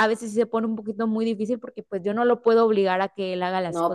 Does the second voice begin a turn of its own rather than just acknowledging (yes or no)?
no